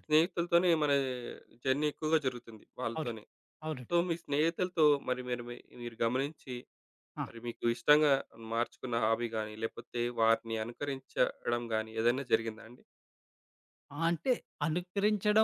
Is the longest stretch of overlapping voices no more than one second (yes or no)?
yes